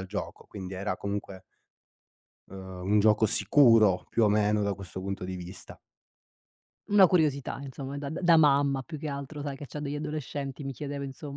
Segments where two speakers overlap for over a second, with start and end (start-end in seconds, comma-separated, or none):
none